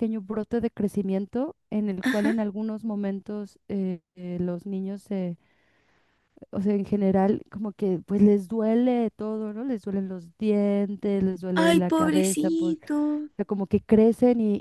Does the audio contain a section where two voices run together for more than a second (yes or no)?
yes